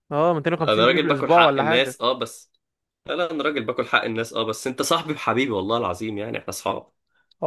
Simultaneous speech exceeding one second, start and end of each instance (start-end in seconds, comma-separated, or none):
0.7-2.0